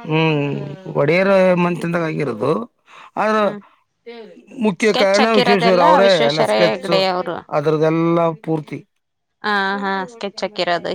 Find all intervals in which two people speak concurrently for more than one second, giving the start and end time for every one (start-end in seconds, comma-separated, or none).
4.9-6.9